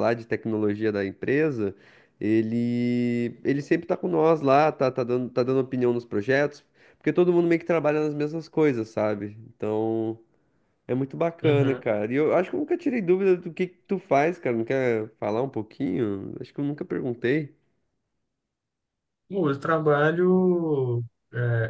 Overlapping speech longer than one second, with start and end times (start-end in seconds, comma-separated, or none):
none